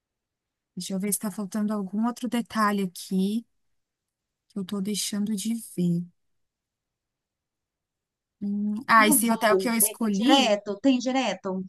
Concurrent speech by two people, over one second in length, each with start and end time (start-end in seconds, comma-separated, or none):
9.0-10.6